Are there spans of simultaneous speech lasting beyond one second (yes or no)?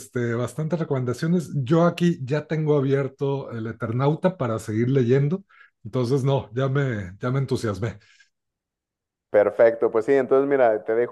no